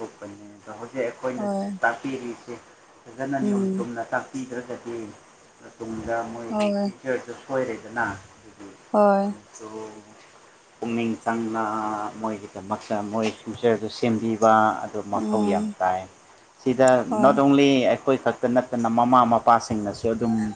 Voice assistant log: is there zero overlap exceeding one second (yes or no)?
yes